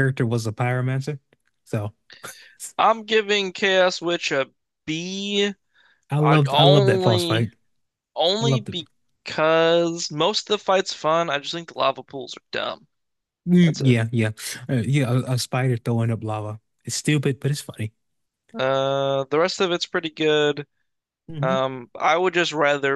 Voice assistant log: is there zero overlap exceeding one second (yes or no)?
no